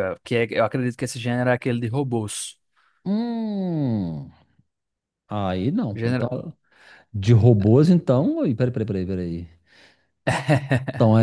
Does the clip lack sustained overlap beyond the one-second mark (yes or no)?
yes